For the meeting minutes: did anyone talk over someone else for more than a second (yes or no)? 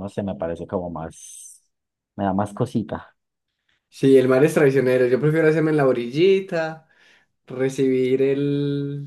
no